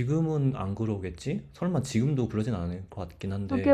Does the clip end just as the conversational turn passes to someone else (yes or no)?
yes